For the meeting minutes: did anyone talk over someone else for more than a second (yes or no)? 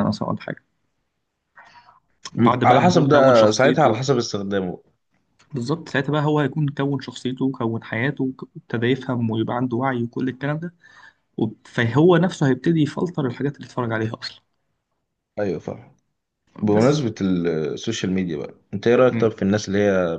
yes